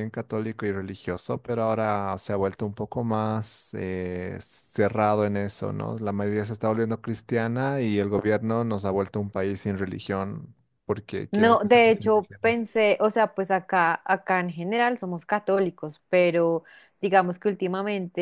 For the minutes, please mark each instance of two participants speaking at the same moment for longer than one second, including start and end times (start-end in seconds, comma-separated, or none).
11.3-12.7